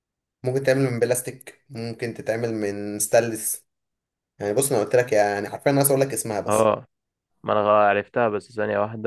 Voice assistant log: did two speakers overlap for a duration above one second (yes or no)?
no